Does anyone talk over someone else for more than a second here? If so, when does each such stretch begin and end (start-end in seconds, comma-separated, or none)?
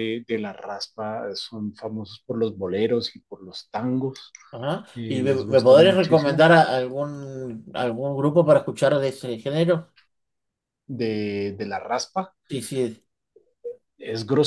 5.0-6.5